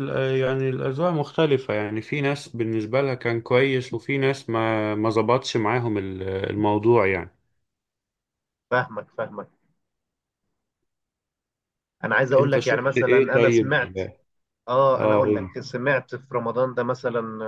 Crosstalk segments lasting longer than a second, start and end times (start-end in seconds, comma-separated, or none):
12.4-13.7